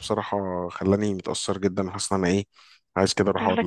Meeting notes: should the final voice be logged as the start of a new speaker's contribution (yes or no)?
no